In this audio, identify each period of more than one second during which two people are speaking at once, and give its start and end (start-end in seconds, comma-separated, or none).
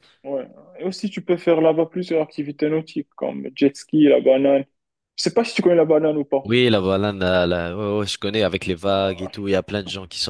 none